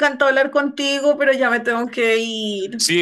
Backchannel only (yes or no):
no